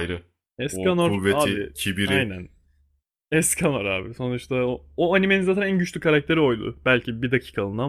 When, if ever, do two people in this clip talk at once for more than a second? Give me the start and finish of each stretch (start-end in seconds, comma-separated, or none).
0.7-2.3